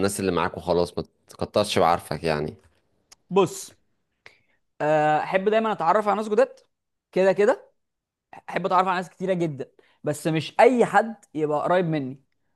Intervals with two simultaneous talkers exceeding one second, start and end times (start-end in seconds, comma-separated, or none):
none